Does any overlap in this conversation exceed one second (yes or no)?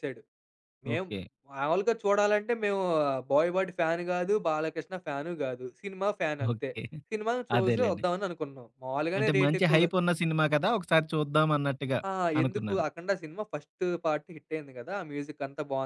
no